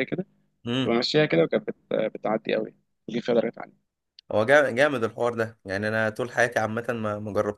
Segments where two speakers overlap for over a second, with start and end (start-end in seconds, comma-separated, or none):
none